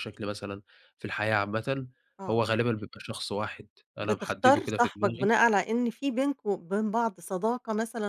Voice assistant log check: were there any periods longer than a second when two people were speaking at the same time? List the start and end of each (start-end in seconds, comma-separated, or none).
4.0-5.3